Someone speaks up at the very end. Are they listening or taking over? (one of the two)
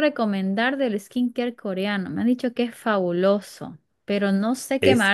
listening